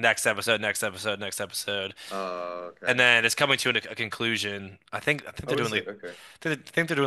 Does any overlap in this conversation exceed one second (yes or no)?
no